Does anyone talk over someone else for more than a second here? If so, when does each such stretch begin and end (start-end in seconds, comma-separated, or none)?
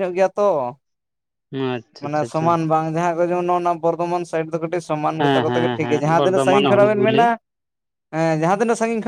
5.2-7.2